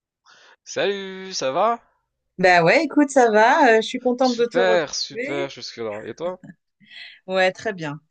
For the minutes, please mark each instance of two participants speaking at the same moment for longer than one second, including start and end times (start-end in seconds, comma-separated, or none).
4.2-5.5